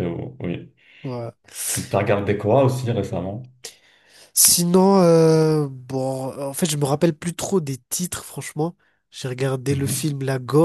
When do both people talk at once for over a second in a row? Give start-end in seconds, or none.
none